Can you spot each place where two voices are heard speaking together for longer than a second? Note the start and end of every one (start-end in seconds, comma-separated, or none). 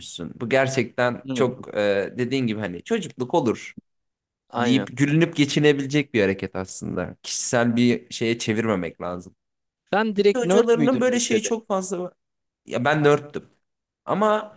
10.2-11.5